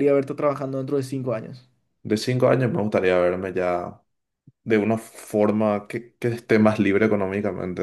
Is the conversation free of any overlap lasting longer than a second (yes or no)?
yes